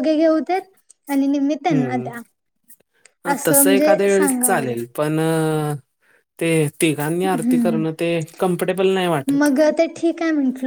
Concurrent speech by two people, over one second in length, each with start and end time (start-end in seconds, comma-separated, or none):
3.5-4.7